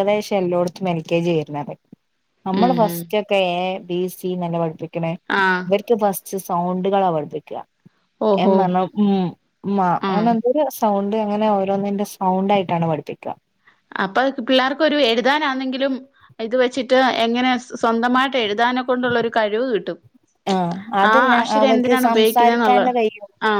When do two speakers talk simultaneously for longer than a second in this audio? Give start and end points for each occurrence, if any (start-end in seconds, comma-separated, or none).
21.1-22.9